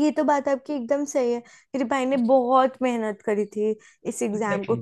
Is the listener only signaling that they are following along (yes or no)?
yes